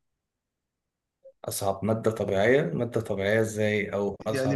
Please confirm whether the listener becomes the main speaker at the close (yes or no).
yes